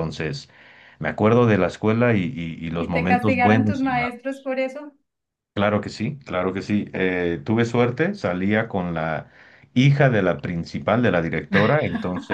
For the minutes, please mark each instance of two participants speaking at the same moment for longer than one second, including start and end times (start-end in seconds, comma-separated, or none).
2.8-4.1